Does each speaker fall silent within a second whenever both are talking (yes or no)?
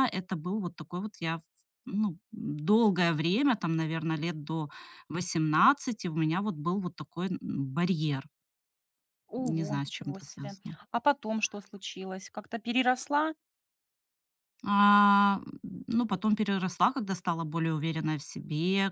no